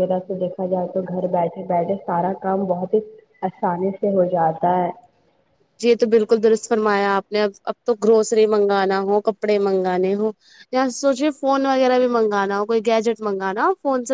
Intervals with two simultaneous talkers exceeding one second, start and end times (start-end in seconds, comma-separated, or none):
none